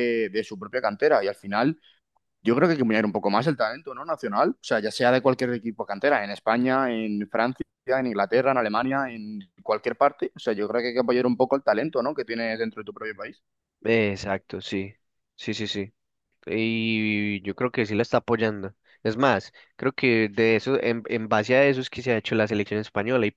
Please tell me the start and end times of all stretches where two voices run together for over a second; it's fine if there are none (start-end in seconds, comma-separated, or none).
none